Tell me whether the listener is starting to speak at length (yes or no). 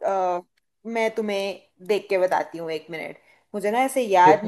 no